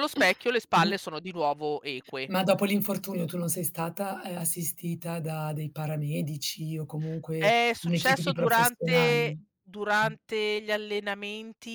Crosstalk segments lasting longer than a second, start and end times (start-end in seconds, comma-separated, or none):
7.4-9.5